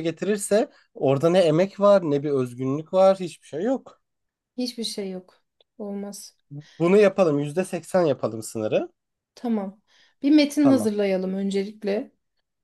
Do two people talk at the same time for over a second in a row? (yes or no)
no